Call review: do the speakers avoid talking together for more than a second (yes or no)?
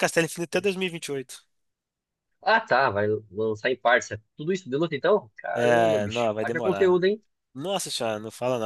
no